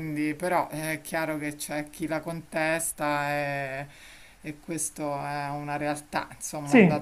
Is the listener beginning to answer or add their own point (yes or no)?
yes